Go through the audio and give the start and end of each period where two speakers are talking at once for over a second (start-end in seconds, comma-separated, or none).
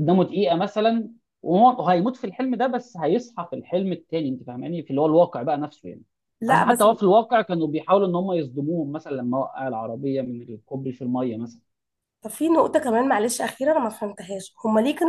none